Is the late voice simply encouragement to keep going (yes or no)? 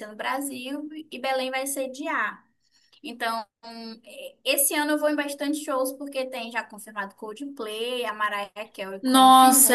no